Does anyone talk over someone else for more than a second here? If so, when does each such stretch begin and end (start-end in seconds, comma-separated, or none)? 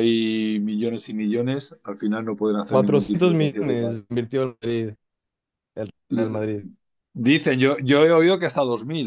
2.7-4.0